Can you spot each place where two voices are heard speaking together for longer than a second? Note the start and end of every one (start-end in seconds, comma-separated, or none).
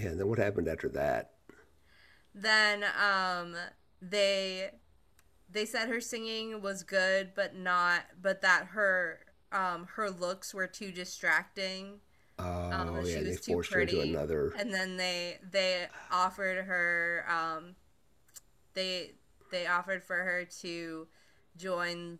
12.7-14.6